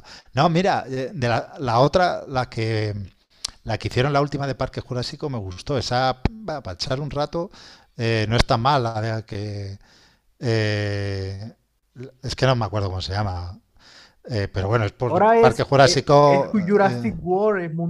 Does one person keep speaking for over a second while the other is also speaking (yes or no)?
yes